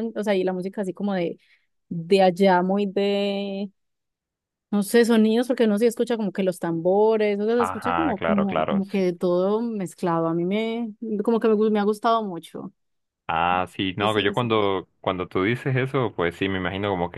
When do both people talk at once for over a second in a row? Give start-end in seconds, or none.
7.6-9.0